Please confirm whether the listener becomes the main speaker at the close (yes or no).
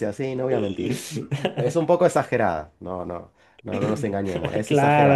yes